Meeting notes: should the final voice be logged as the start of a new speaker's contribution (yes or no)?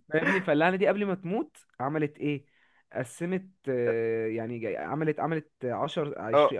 yes